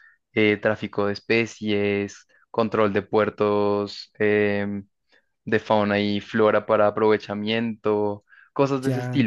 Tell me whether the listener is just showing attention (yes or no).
no